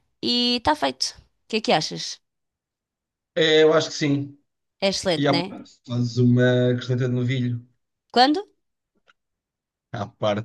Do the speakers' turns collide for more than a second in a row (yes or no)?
no